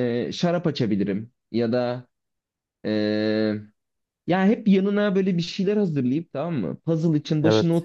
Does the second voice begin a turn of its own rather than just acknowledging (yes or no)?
no